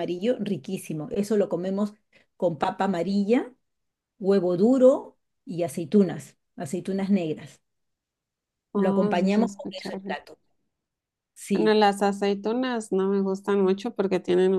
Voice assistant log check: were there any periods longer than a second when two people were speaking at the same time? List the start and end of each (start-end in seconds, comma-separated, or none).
8.8-10.2